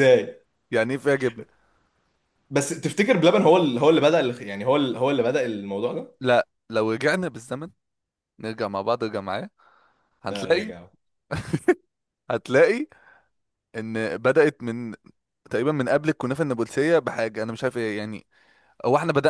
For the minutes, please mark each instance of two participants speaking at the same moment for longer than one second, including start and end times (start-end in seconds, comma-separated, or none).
none